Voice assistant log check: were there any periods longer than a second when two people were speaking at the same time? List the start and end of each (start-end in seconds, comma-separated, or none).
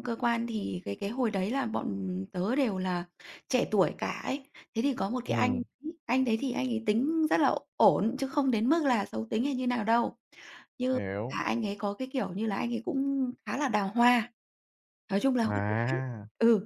none